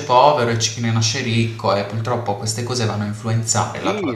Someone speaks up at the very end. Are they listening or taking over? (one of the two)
taking over